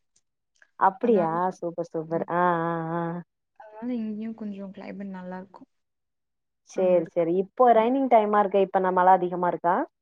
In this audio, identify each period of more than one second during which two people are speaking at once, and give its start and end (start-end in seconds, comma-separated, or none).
none